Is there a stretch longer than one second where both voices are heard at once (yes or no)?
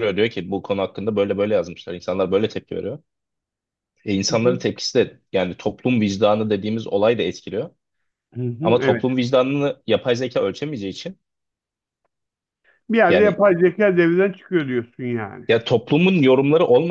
no